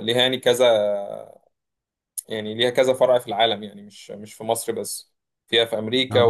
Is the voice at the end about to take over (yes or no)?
no